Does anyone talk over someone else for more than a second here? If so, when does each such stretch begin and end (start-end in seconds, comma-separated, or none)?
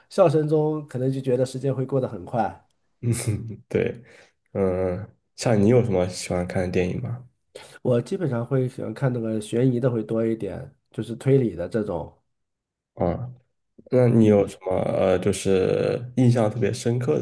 none